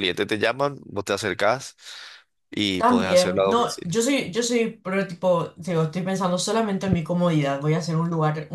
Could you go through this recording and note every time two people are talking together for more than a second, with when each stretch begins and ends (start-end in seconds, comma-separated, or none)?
2.8-4.0